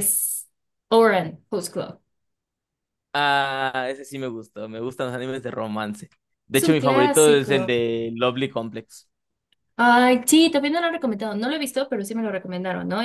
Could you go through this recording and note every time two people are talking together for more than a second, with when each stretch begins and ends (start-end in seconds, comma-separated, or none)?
6.5-7.8